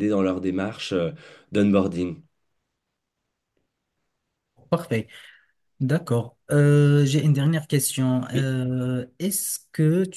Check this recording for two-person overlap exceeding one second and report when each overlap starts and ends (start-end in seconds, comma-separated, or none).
none